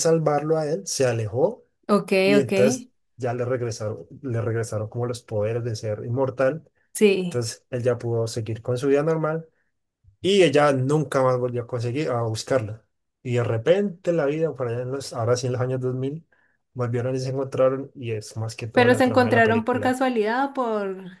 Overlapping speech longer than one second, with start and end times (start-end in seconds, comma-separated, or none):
18.7-20.0